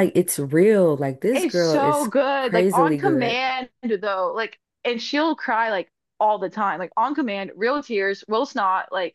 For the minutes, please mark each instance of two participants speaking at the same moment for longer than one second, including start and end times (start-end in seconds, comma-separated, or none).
1.3-3.4